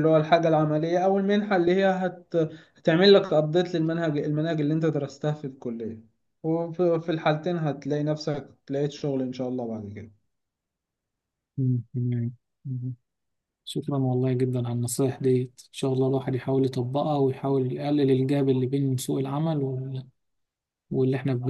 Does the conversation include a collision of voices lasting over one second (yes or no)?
no